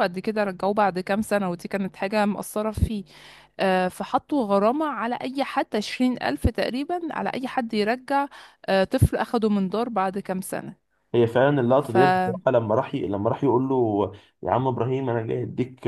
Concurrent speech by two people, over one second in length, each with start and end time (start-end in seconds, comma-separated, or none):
none